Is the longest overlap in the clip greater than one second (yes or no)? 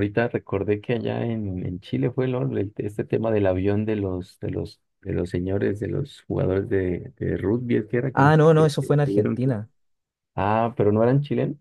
yes